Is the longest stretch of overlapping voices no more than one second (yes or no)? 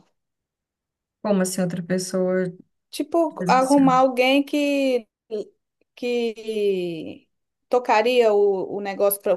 yes